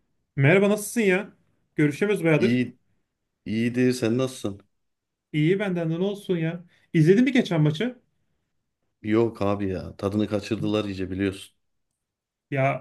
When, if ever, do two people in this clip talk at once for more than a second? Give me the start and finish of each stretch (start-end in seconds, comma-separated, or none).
none